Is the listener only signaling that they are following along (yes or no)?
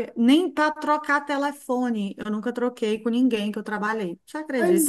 no